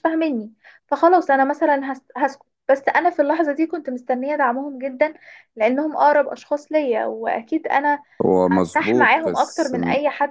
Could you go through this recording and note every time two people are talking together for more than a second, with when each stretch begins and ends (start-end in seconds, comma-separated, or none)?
8.5-9.8